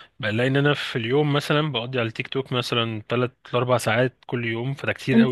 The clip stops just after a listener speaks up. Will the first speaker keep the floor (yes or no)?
no